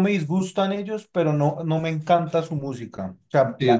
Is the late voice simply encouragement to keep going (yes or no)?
no